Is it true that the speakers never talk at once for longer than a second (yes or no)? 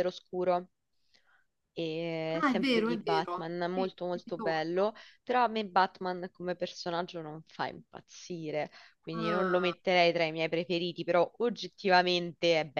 no